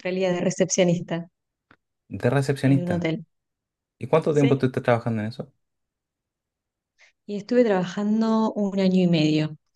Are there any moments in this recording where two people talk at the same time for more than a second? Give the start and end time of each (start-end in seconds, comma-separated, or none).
none